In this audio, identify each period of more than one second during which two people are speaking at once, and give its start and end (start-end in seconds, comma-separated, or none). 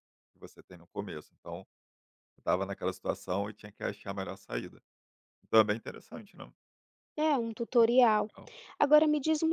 none